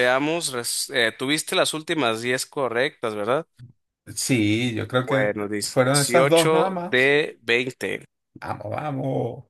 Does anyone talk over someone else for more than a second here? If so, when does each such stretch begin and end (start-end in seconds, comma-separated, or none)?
5.0-7.2